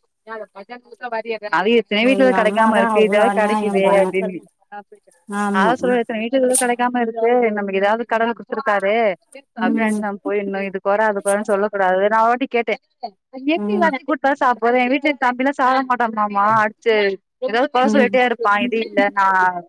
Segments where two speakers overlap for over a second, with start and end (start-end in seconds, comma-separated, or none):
2.1-4.1